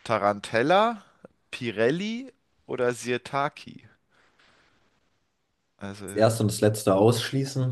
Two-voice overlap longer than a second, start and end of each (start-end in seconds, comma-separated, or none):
none